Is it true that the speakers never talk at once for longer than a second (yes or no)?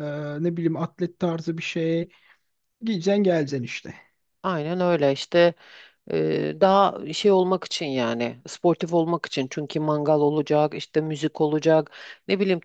yes